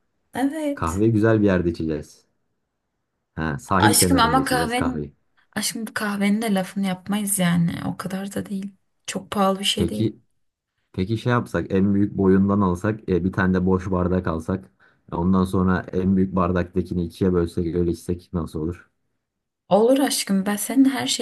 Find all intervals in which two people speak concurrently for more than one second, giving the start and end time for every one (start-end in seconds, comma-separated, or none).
3.8-5.1